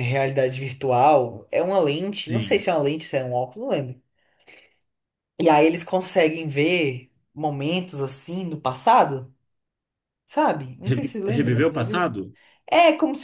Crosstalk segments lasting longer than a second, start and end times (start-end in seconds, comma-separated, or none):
10.8-12.1